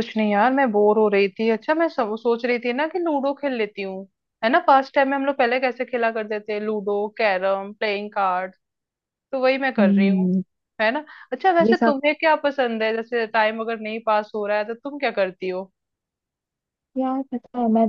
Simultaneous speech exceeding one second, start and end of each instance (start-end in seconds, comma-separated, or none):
none